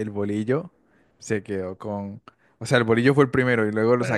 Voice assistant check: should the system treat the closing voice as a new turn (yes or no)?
no